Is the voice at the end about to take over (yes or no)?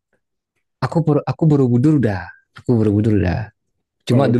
no